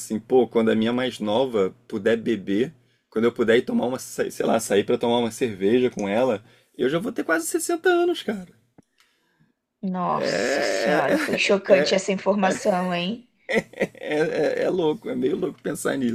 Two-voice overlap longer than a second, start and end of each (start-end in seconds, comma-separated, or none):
10.1-11.5